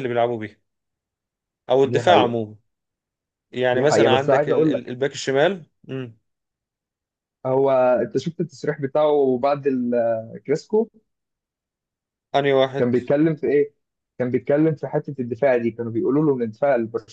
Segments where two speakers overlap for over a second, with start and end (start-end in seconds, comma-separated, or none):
3.7-4.9